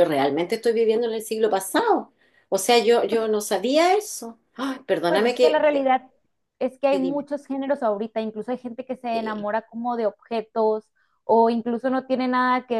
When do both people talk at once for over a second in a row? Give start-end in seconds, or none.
none